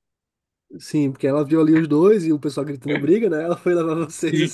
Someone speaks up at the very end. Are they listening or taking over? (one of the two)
taking over